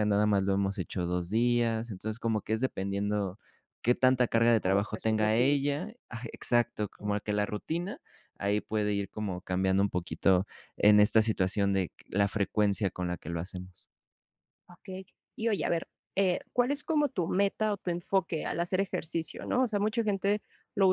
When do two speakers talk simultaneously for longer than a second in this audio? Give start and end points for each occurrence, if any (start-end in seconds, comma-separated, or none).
4.3-5.6